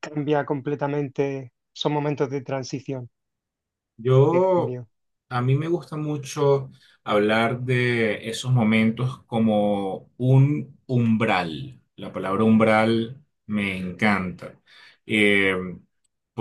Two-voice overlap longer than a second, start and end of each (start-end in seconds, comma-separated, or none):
none